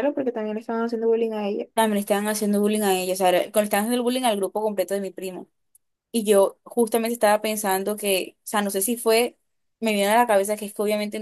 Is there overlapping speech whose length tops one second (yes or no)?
no